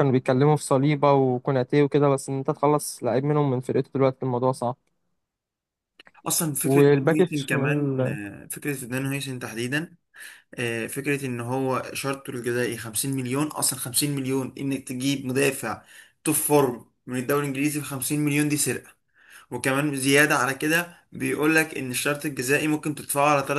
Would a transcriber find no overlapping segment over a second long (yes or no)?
no